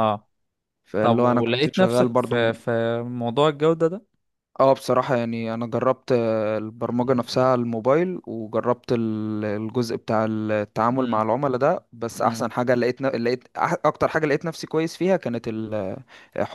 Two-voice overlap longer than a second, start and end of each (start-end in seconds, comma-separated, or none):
1.0-2.5